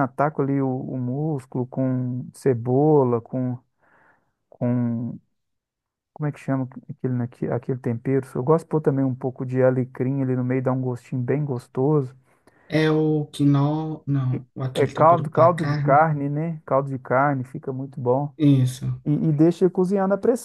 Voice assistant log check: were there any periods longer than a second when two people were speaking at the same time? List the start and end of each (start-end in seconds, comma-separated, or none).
14.7-16.0